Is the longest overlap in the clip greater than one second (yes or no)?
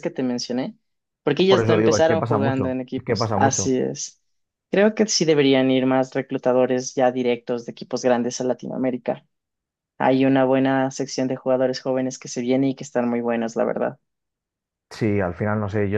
yes